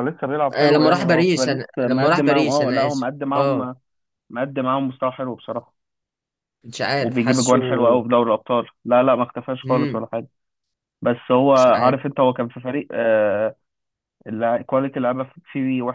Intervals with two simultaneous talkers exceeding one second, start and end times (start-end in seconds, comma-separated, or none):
0.6-3.6